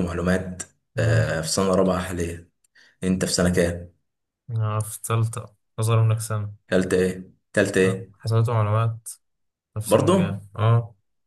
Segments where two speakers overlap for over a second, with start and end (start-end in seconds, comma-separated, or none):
none